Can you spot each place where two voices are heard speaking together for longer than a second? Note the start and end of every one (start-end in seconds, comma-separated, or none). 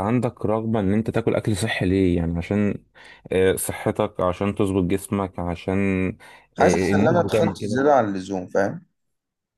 6.6-7.8